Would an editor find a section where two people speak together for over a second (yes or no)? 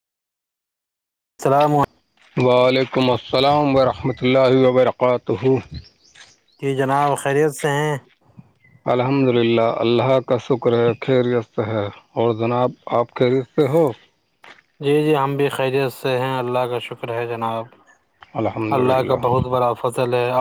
no